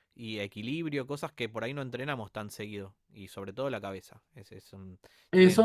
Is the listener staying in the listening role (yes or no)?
no